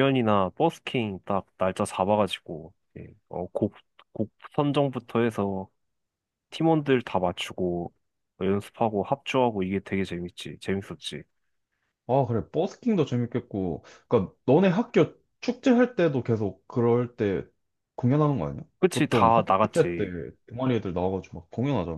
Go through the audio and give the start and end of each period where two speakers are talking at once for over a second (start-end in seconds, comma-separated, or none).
18.8-20.1